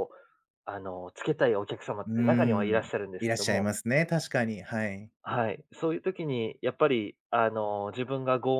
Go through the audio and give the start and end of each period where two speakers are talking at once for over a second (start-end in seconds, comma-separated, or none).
2.0-3.7